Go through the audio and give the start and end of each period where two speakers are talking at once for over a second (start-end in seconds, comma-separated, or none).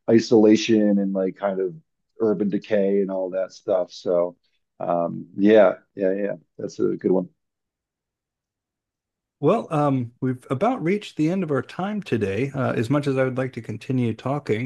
none